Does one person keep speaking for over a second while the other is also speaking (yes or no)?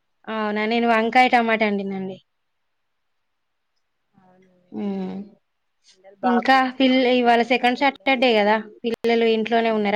yes